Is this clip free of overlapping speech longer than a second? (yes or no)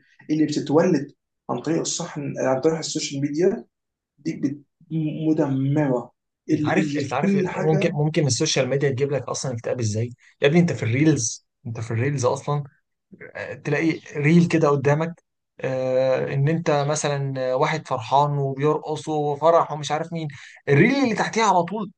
no